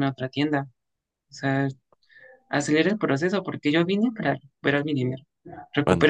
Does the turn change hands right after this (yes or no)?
no